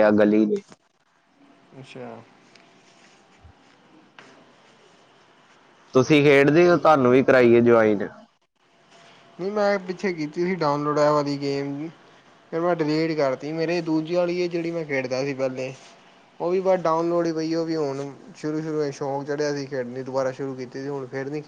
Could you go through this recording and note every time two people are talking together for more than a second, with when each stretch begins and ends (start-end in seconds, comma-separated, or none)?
none